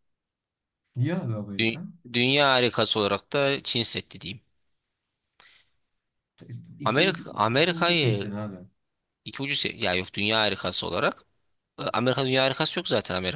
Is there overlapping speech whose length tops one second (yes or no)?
yes